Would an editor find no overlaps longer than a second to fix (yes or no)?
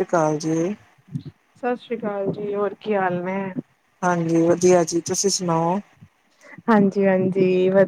yes